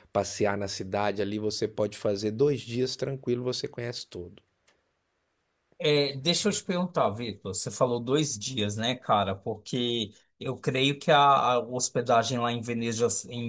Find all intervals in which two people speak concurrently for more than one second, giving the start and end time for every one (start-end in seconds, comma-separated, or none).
none